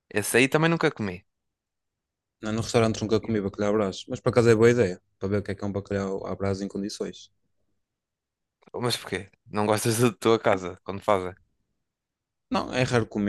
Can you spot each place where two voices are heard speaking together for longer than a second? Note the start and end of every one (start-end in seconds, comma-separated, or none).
none